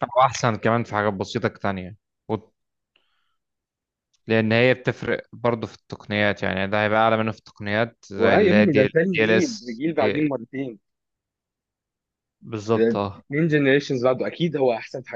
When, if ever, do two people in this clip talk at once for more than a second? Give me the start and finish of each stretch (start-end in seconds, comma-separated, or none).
8.2-10.3